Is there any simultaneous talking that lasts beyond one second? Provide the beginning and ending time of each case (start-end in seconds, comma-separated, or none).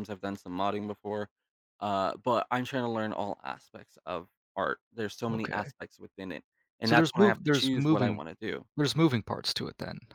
6.8-8.2